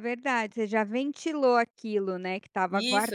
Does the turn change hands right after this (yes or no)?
yes